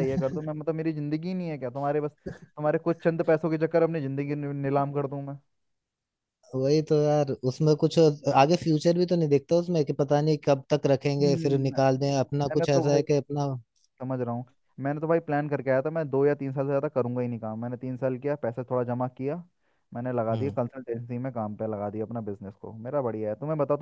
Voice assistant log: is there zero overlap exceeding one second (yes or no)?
yes